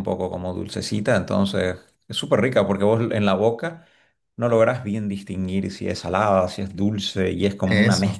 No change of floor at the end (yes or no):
yes